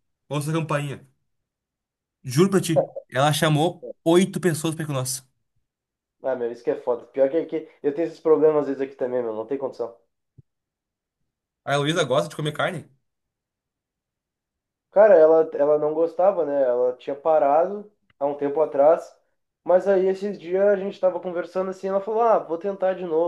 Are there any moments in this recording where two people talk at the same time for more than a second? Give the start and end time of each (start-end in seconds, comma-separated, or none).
none